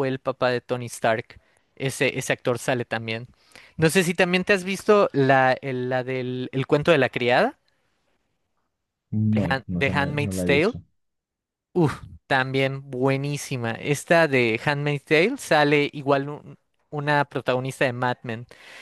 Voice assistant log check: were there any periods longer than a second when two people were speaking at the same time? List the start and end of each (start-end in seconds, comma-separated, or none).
9.2-10.7